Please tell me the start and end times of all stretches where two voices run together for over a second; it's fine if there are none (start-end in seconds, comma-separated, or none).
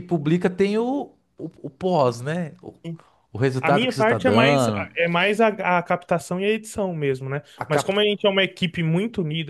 3.6-4.9